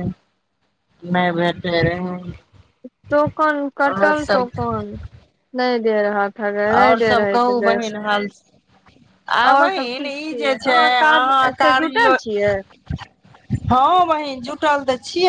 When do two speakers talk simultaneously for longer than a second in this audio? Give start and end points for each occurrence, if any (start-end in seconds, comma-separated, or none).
9.5-12.1